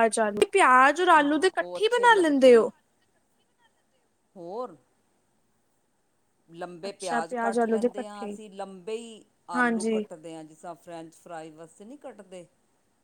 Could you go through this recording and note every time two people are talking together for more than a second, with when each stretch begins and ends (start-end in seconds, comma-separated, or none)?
1.2-2.7, 6.9-8.4